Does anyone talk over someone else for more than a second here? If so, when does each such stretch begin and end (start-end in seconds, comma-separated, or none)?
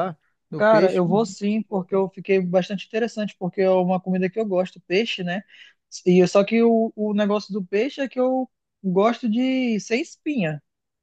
0.6-2.0